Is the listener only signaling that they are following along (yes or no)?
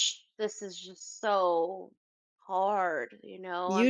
no